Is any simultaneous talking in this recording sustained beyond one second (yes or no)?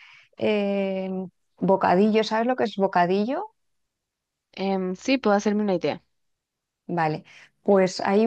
no